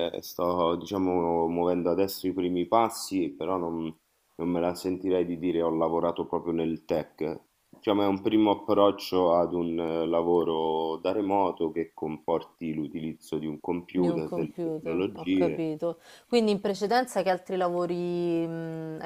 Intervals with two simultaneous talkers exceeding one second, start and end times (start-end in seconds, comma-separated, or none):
13.9-15.6